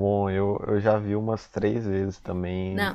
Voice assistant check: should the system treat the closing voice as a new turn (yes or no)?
yes